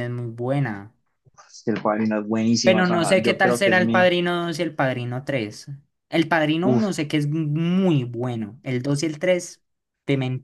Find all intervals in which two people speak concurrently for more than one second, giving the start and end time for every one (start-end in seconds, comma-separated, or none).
2.6-4.1